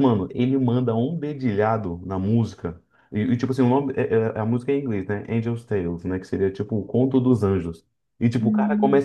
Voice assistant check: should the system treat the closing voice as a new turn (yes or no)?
no